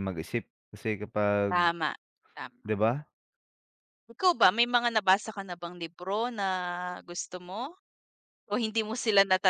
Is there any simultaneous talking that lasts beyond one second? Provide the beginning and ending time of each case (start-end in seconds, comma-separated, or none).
none